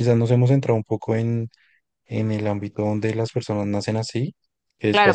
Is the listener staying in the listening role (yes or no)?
no